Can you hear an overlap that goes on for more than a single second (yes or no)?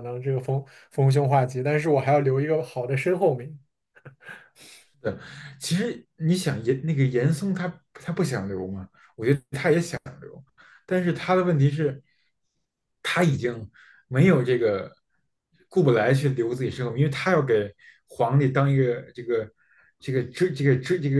no